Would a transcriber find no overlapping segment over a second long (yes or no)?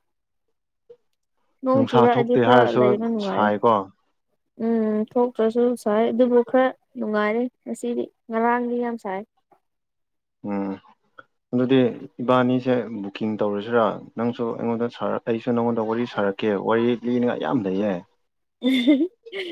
no